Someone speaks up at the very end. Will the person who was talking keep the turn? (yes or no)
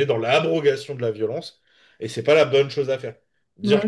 yes